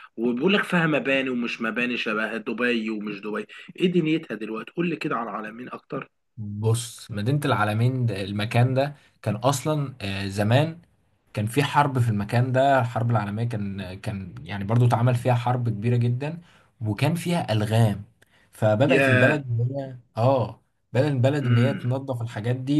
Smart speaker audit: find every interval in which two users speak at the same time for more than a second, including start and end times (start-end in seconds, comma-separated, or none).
none